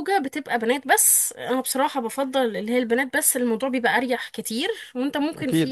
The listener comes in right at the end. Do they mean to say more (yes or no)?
no